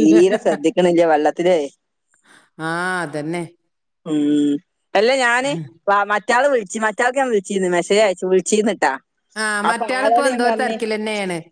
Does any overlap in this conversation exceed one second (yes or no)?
no